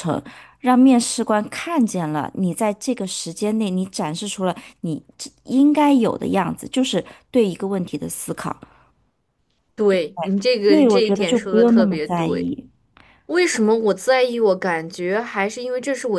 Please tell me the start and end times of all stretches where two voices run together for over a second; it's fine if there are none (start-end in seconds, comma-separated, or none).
10.7-12.5